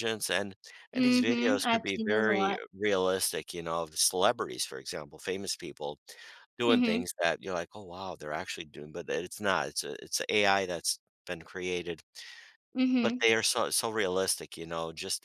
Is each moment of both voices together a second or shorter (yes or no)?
no